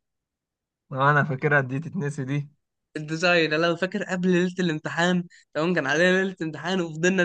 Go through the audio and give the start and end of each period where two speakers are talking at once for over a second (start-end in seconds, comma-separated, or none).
none